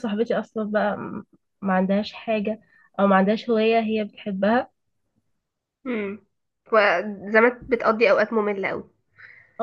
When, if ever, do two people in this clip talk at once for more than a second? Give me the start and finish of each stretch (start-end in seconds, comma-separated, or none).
none